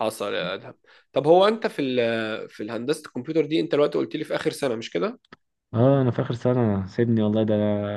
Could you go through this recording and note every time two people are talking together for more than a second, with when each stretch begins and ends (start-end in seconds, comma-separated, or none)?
none